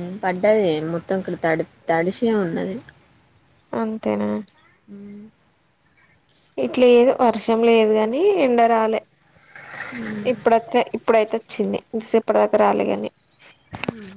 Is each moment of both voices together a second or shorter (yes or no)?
yes